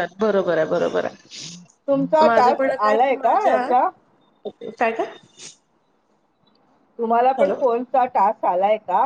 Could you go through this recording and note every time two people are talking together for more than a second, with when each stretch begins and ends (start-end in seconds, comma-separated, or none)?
1.9-3.6